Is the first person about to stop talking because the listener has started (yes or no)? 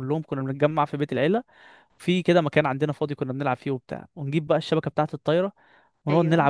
no